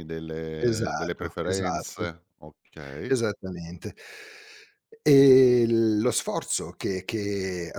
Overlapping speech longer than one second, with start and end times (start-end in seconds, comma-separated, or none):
0.6-2.0